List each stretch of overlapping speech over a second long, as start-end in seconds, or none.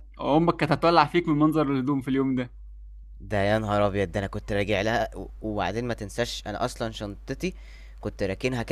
none